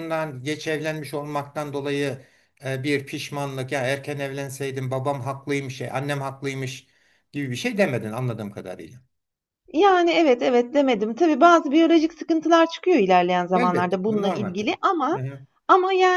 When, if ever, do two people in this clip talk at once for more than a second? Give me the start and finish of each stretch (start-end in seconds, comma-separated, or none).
13.5-15.2